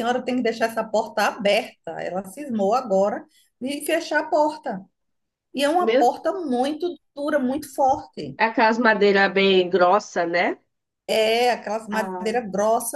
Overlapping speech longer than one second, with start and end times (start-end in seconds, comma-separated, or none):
none